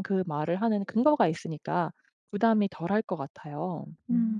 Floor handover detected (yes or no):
yes